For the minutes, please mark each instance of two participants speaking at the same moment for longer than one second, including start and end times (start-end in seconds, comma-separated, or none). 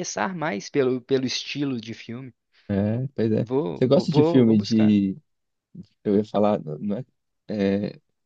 3.4-5.0